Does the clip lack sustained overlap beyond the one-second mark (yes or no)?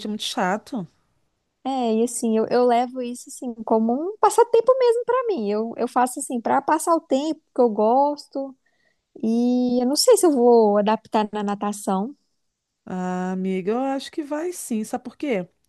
yes